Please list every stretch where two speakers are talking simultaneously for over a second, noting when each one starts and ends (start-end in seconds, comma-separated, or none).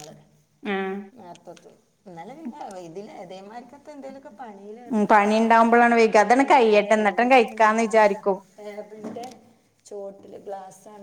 6.1-8.4